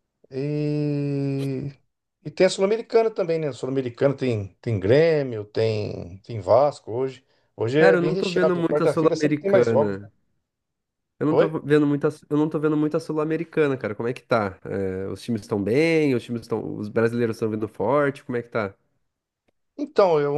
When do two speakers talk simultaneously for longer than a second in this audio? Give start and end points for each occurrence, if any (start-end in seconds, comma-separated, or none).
7.8-10.1